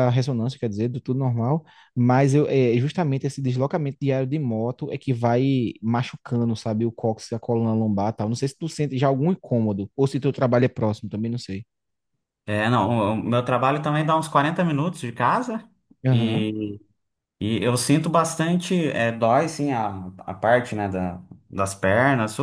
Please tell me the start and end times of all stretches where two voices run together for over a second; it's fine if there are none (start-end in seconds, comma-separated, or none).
none